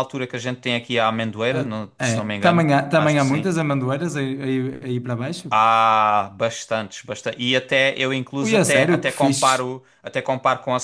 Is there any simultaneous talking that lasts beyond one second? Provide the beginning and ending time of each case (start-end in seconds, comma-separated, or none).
1.5-3.5, 8.4-9.7